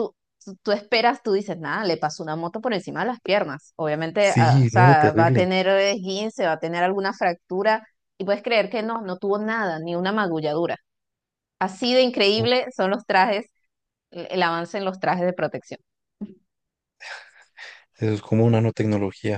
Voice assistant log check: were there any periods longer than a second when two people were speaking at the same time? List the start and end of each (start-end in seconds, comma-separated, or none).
4.3-5.5